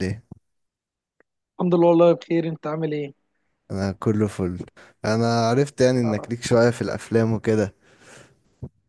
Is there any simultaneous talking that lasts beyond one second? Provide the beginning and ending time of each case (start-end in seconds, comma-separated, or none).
none